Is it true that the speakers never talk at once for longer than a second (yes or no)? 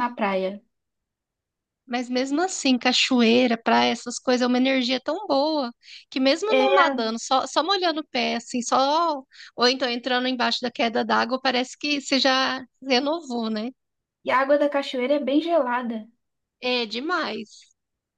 yes